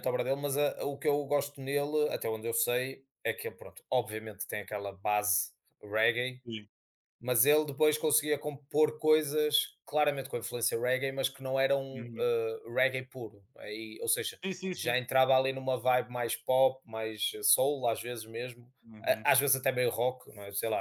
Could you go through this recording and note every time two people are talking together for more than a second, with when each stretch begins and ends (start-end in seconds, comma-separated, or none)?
none